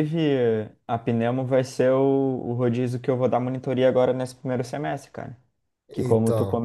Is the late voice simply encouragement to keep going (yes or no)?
yes